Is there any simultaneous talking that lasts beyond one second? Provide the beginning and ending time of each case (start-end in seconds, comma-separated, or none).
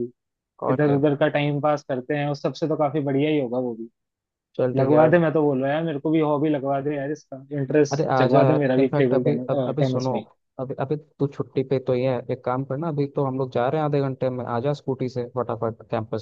7.9-10.1